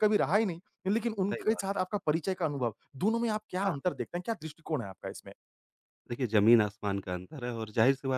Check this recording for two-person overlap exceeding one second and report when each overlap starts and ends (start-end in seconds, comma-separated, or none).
none